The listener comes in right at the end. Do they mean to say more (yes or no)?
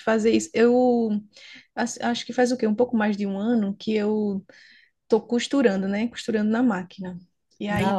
no